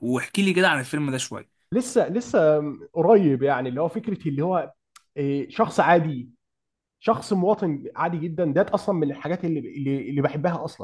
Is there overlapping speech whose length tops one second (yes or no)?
no